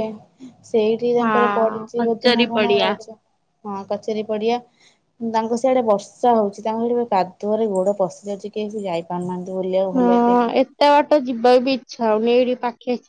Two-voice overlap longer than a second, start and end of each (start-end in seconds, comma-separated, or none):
1.2-2.9